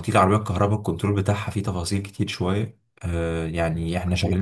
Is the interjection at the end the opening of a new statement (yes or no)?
no